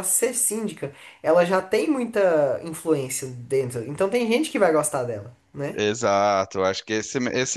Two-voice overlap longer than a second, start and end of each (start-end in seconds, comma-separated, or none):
none